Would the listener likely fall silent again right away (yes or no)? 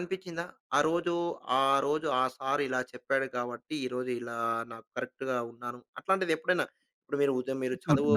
no